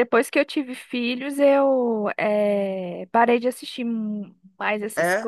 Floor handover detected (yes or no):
no